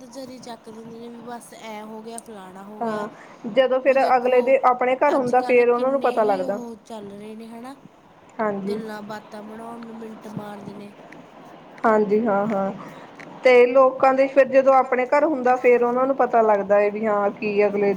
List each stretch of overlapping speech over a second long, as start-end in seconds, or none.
5.2-6.6